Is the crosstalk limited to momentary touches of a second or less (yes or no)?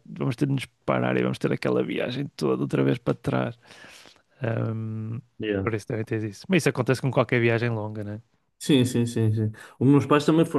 yes